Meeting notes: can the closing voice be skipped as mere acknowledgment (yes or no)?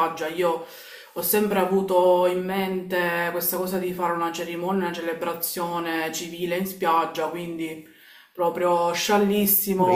no